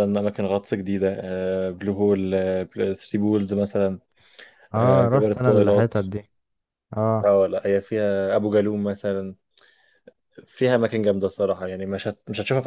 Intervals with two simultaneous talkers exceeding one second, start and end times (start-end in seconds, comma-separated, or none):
4.8-6.0